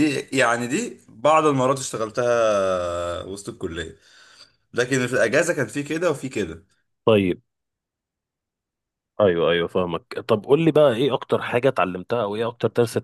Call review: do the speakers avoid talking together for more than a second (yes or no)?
yes